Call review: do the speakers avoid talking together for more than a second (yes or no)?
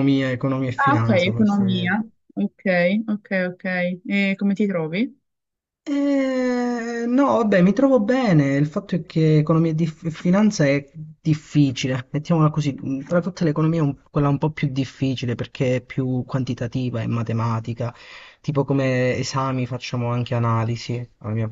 no